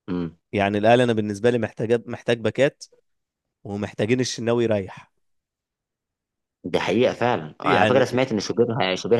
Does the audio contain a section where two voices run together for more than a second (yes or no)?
no